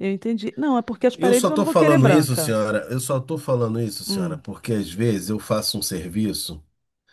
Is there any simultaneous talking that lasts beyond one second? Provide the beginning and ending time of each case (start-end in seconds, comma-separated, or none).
1.1-2.5